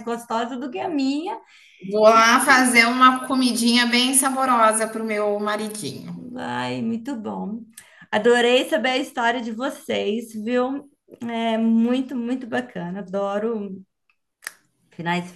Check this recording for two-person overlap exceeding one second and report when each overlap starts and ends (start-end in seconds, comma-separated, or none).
none